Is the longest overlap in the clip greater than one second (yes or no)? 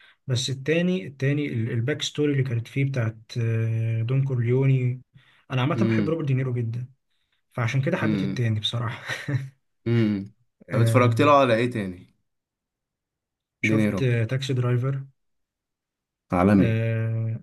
no